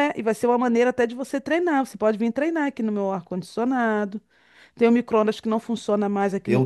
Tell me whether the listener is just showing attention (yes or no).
no